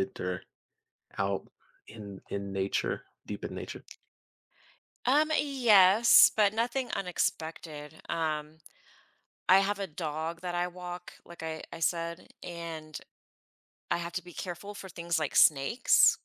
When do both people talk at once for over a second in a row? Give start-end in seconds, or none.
none